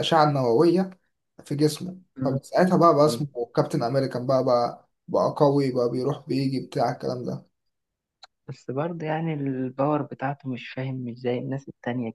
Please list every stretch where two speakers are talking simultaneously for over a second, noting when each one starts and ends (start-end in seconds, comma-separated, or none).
none